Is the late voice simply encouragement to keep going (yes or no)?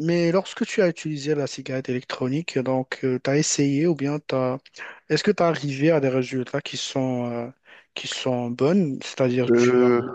yes